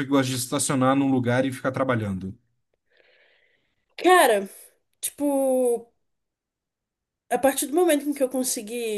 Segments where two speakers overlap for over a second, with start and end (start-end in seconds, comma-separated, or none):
none